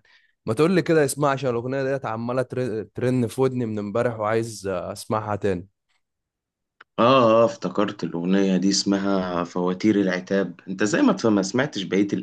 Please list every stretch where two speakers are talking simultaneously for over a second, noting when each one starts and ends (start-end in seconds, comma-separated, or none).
none